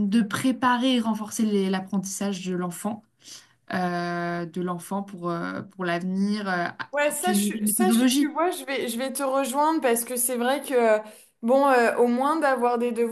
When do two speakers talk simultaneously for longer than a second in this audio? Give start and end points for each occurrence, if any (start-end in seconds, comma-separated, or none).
6.9-8.3